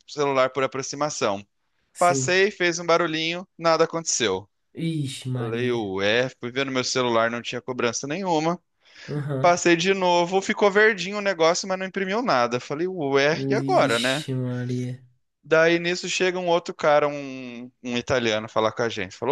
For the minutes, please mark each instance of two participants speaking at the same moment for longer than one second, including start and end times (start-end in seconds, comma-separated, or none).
none